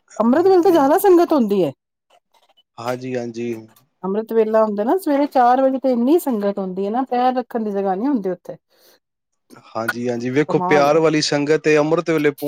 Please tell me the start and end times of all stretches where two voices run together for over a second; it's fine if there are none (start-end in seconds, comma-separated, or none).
none